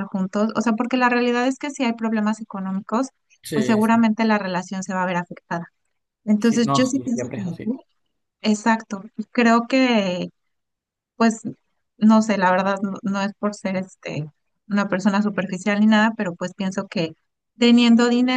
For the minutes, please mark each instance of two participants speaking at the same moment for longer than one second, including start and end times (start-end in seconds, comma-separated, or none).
6.4-7.8